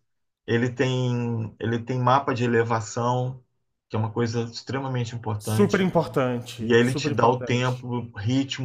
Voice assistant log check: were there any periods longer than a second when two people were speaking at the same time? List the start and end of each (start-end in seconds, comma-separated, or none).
6.6-7.8